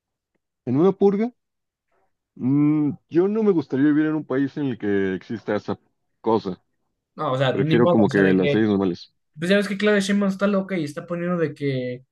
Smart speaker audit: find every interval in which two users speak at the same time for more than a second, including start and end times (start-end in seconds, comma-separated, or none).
7.5-8.7